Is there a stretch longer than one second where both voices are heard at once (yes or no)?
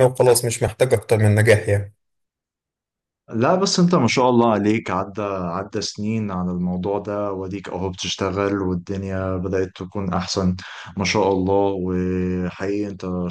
no